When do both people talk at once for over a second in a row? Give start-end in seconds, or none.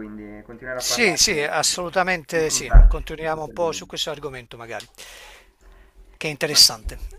2.3-3.9